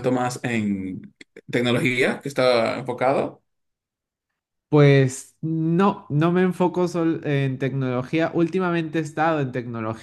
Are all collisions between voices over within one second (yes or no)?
yes